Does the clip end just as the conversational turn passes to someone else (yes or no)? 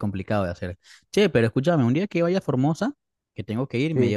no